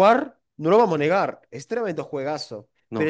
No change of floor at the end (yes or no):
yes